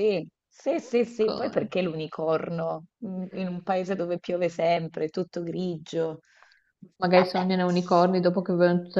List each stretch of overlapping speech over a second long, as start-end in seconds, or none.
none